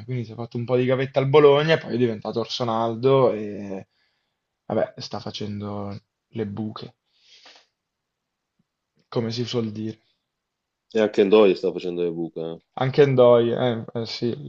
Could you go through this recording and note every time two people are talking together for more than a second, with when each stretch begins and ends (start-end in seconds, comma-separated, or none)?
none